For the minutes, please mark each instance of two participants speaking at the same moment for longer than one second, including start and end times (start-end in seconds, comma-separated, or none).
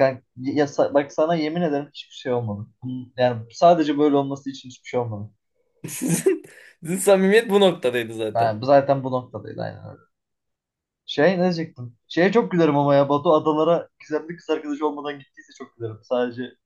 none